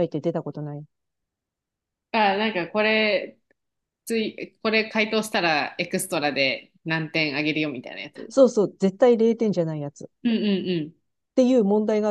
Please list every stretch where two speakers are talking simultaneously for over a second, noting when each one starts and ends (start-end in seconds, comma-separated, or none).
none